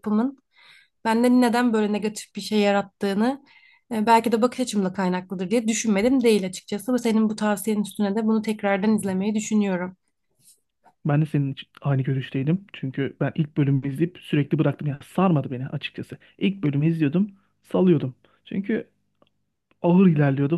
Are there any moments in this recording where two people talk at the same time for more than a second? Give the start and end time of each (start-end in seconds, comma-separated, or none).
none